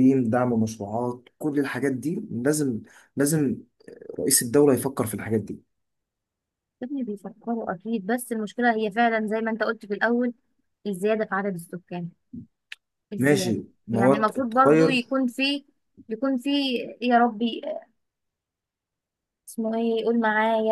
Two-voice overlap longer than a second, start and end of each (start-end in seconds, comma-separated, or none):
13.2-15.0